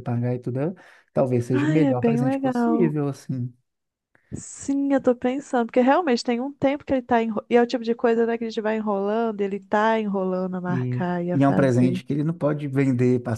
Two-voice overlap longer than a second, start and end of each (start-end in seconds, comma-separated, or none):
1.5-2.9, 10.7-12.0